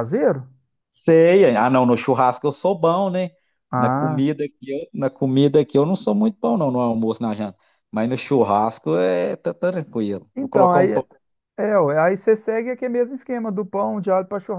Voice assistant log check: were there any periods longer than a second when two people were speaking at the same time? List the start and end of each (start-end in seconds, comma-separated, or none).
none